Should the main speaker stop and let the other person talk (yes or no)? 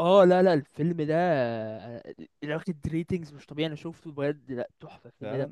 yes